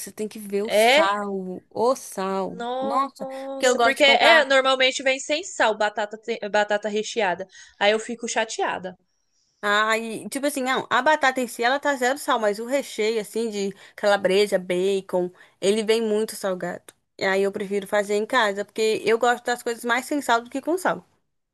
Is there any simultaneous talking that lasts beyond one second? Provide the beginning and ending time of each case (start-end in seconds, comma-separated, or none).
2.5-4.5